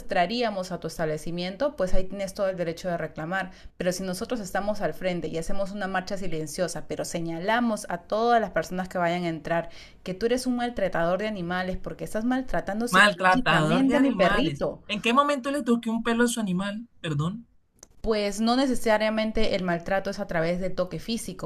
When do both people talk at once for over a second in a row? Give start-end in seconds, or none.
12.9-14.8